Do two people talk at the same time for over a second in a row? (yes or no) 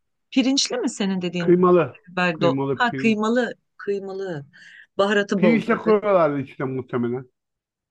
yes